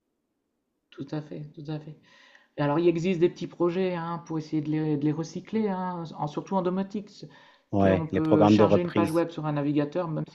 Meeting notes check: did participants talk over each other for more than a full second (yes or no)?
yes